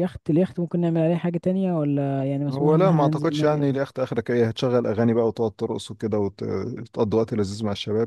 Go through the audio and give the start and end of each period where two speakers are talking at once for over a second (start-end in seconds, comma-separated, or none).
2.5-3.8